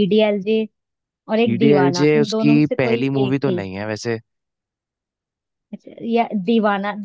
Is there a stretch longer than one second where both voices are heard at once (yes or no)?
yes